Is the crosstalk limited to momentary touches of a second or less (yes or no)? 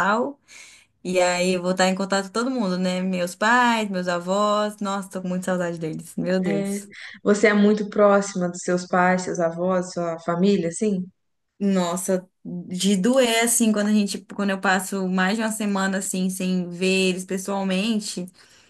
yes